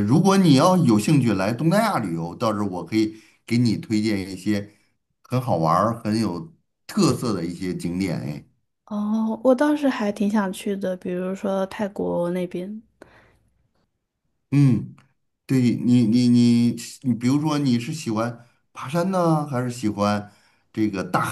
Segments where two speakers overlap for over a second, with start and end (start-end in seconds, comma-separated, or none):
none